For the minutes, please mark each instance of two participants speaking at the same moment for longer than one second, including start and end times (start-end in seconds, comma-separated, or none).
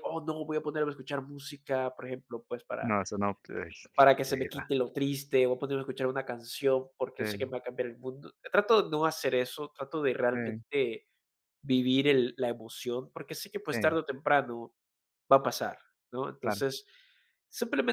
none